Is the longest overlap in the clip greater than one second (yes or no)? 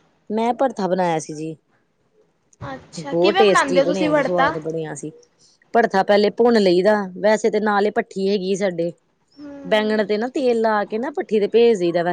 yes